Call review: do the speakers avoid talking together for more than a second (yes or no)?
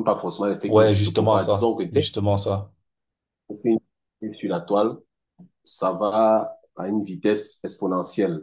no